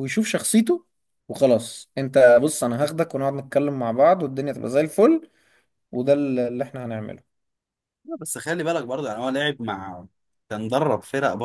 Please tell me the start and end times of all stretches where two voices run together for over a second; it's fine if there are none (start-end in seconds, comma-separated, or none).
none